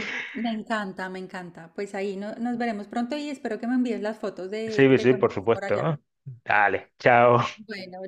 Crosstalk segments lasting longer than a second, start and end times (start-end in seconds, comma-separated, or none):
4.7-5.9